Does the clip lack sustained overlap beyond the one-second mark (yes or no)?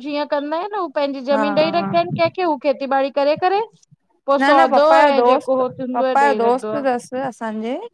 no